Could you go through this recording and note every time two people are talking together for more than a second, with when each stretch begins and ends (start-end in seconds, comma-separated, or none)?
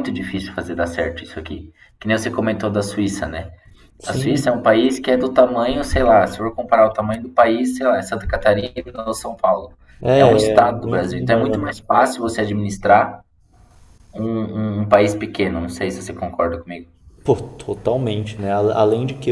10.1-11.8